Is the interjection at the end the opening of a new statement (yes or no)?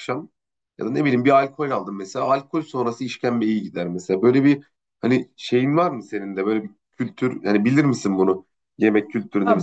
yes